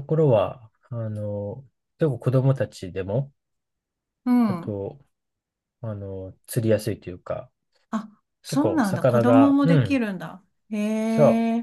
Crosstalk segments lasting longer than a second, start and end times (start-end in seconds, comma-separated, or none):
8.5-10.0